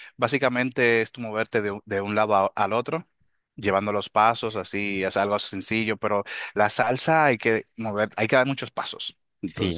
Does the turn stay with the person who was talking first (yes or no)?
no